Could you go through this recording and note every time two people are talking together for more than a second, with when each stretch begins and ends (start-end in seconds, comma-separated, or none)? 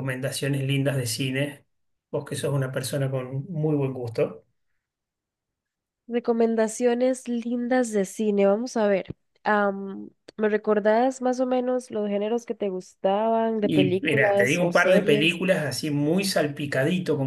13.6-15.4